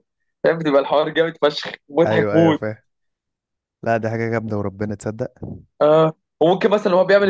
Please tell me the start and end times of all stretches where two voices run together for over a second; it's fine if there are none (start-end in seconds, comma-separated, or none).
none